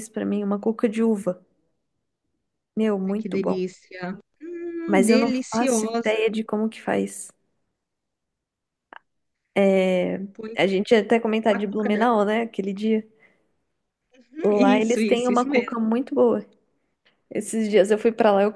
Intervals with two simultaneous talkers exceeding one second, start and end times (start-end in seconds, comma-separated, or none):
4.9-6.2, 14.4-15.7